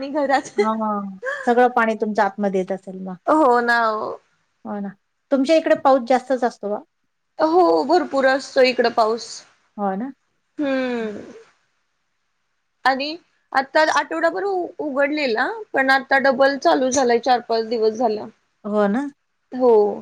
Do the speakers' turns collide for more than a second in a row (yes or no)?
no